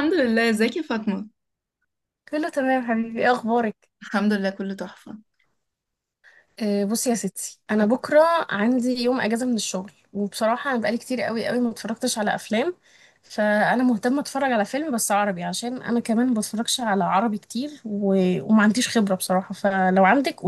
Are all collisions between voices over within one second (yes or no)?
yes